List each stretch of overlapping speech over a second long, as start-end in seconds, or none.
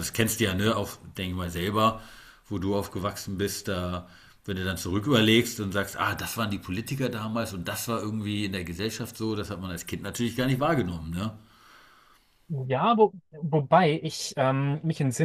none